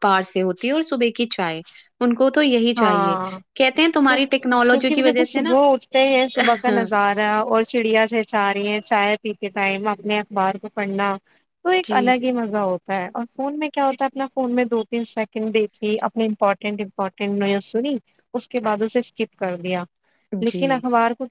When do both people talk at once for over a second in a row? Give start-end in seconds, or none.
4.1-5.5